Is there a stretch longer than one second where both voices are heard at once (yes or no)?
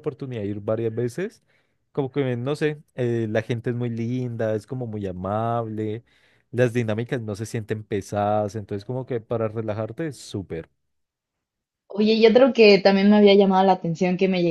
no